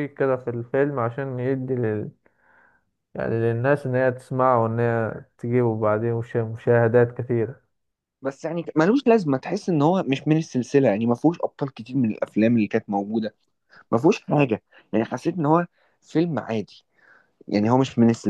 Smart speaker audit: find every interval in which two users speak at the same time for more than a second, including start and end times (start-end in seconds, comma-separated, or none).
none